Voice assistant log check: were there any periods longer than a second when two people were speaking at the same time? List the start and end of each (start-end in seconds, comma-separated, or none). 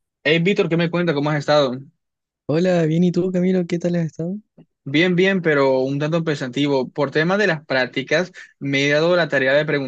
none